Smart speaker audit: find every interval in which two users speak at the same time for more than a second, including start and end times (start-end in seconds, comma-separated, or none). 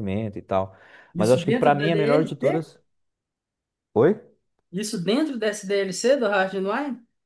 1.2-2.6